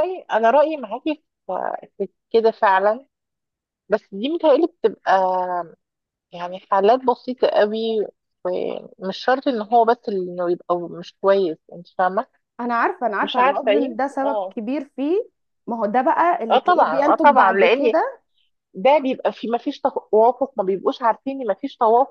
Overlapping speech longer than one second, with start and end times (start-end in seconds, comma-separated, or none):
13.2-14.6, 16.5-17.9